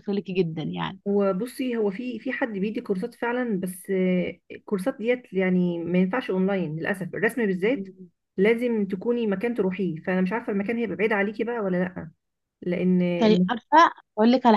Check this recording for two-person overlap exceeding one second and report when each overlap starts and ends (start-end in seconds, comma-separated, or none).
none